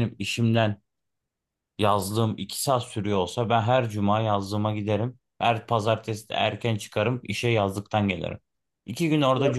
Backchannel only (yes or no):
yes